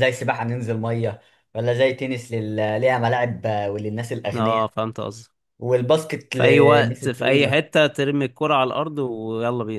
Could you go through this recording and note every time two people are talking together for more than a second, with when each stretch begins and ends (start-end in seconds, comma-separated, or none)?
6.3-7.6